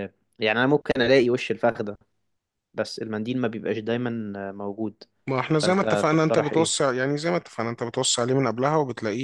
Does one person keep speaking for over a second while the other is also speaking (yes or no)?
yes